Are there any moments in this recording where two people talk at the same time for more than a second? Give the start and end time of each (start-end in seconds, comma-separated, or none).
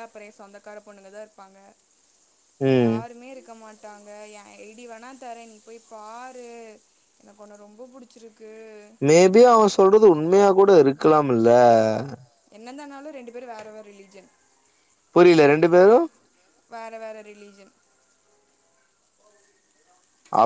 none